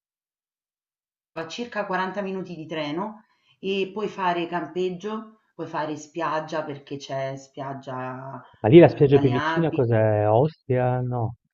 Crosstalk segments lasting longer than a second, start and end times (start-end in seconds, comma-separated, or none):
8.6-9.8